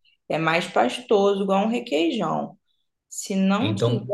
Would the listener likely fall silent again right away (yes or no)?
yes